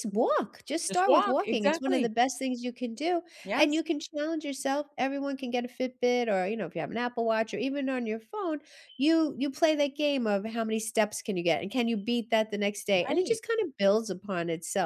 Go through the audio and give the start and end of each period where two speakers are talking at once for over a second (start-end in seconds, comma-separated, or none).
0.9-2.1